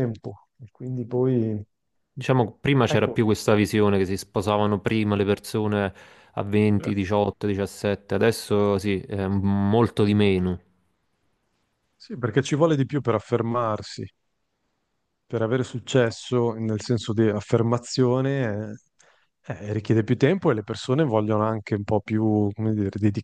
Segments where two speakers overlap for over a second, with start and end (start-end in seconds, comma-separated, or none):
none